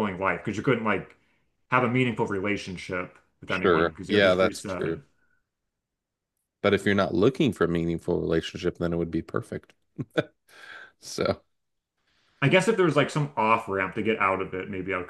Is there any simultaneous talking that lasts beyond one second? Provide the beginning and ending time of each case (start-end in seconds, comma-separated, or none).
3.5-4.9